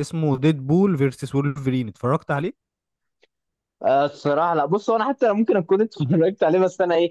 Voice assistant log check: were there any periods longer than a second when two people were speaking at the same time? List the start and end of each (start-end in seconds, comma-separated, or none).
none